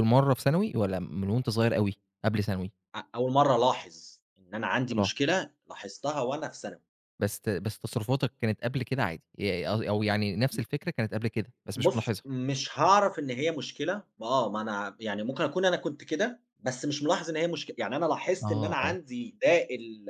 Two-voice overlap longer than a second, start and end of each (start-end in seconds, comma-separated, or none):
none